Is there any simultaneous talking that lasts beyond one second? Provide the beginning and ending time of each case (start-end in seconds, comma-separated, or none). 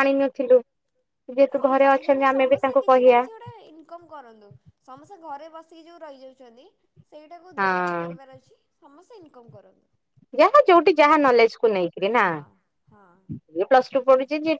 1.6-3.2